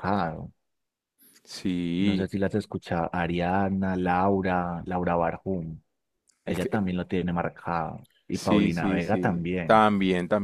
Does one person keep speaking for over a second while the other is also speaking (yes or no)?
yes